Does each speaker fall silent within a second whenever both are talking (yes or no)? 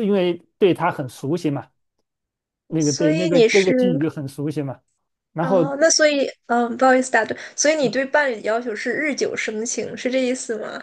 no